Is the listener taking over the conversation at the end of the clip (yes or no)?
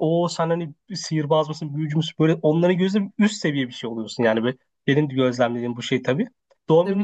no